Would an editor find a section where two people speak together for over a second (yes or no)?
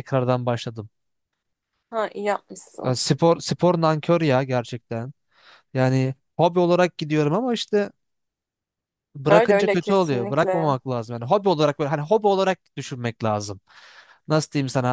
yes